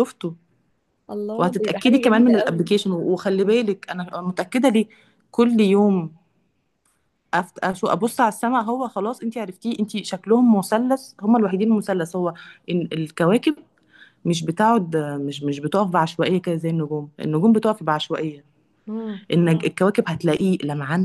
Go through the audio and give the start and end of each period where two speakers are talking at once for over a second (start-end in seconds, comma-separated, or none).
1.4-2.7